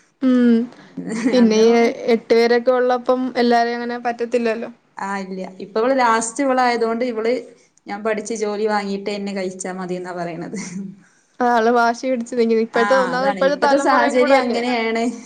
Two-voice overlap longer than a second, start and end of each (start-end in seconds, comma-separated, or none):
12.8-14.6